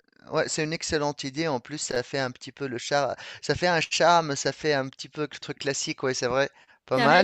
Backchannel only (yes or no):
no